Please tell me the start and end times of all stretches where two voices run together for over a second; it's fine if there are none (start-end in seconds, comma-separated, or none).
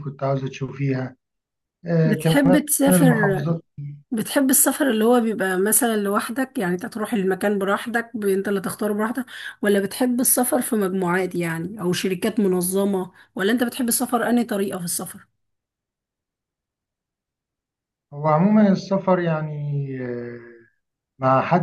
2.0-3.5